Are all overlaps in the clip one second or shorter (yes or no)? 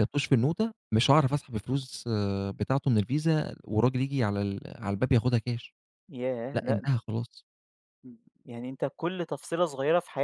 yes